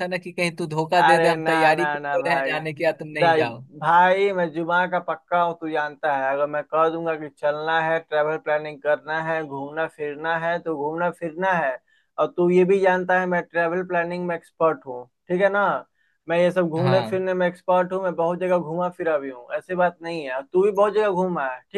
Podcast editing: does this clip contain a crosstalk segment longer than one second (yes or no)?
yes